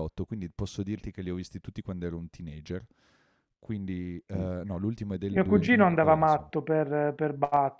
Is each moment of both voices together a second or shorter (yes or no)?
no